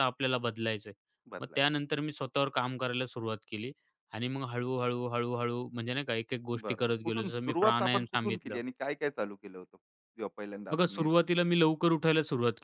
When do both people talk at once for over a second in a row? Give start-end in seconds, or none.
6.6-8.6